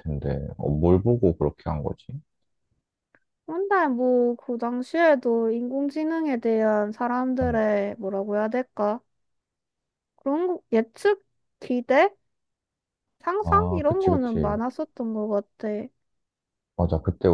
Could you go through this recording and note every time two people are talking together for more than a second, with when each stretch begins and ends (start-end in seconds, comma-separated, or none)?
13.4-14.6